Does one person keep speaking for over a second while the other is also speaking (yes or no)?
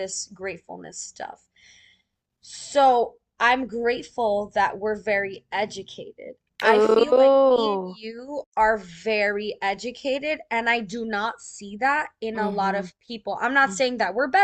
yes